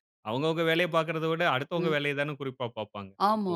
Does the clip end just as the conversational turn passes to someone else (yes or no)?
yes